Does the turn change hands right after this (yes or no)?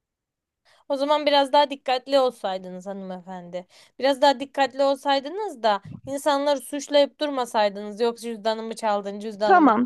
yes